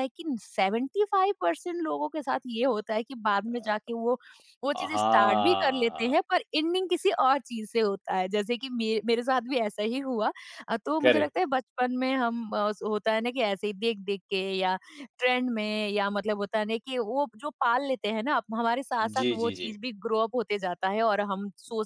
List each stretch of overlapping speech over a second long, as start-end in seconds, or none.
4.9-6.2